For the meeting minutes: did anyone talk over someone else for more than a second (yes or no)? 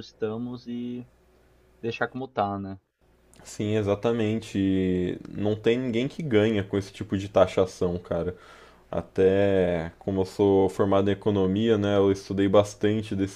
no